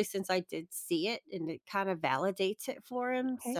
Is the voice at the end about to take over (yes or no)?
yes